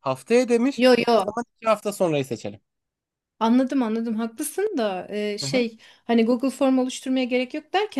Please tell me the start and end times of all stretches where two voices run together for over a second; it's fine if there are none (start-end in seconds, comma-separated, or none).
none